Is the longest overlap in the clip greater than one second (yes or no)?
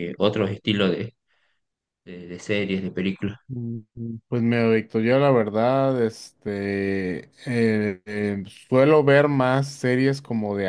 no